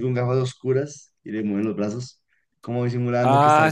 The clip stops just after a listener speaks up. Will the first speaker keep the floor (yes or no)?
no